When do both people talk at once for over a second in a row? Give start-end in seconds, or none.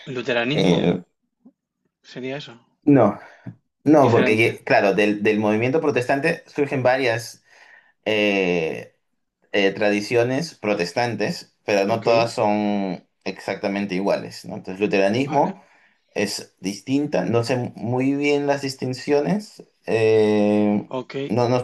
none